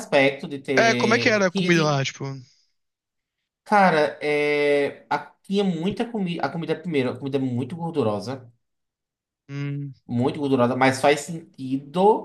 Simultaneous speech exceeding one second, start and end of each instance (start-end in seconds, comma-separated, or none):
0.8-2.0